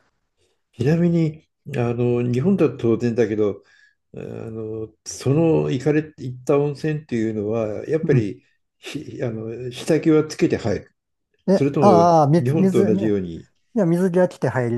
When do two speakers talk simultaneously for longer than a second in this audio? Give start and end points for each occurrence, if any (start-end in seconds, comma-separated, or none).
11.5-13.2